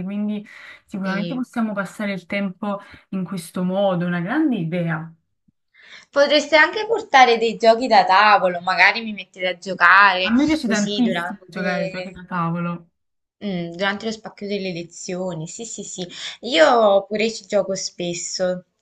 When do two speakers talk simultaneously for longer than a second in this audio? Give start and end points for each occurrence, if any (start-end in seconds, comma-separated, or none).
10.2-12.2